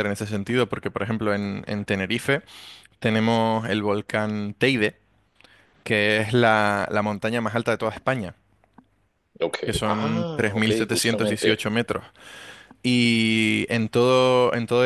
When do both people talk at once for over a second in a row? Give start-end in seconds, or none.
9.6-11.6